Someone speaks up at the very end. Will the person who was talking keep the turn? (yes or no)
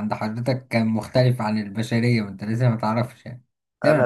no